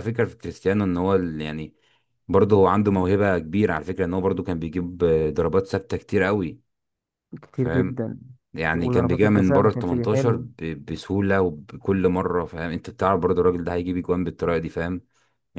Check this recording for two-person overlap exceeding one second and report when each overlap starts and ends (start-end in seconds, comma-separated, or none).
8.7-10.4